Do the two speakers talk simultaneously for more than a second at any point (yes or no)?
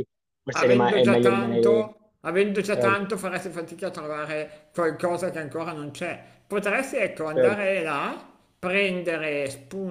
yes